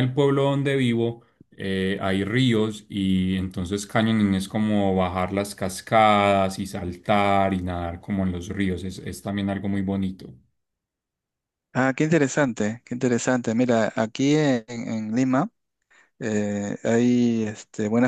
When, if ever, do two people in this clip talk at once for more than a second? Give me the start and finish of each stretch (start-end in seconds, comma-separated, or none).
none